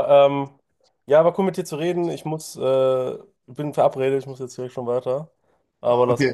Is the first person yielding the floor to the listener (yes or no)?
yes